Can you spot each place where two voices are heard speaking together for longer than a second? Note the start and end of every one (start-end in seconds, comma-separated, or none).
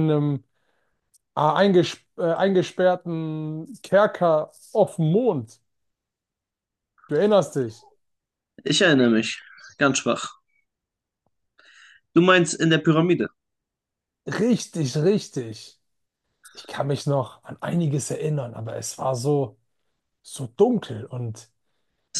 none